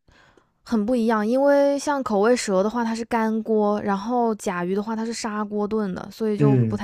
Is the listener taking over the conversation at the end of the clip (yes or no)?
no